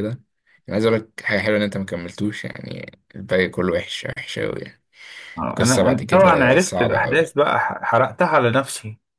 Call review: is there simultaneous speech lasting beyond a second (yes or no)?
yes